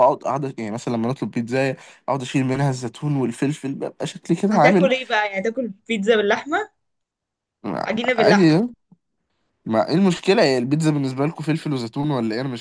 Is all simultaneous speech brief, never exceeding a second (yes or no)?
yes